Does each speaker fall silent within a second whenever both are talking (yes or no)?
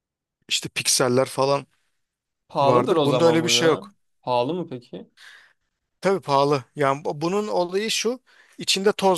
no